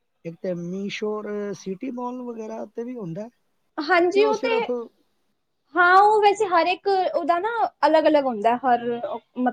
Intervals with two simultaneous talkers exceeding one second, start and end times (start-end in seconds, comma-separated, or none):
none